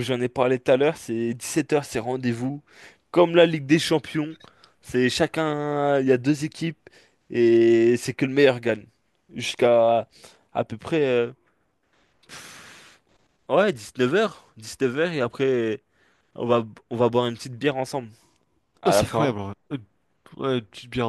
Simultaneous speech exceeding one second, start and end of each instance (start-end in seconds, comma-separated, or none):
none